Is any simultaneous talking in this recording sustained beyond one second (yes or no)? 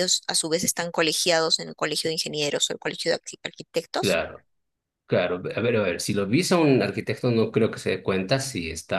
no